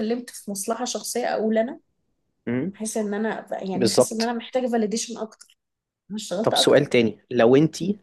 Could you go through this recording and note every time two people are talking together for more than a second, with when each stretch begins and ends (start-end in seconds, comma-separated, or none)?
none